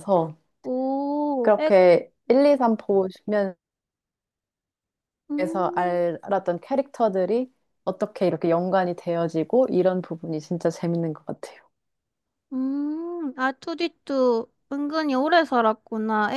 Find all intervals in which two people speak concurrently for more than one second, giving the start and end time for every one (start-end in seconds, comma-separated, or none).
none